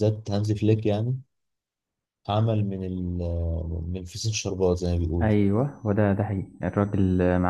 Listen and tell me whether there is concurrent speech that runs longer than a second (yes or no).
no